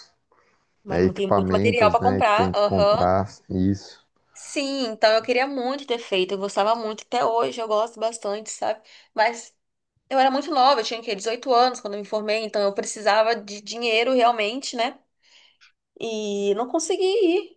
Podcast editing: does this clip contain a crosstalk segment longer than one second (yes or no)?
yes